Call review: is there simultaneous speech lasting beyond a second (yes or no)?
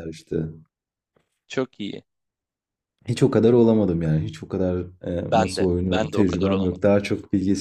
yes